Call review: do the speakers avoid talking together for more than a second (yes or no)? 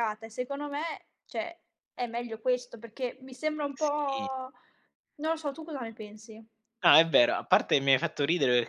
yes